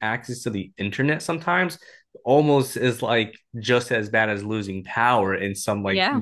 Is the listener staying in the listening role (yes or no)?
yes